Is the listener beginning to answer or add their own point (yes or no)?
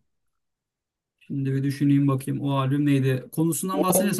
no